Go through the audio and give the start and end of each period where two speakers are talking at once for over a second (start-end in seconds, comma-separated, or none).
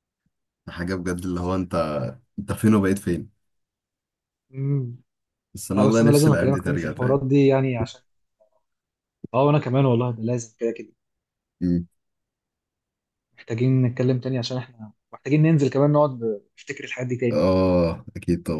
5.8-7.2